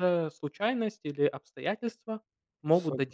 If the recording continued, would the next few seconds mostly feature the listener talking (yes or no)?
yes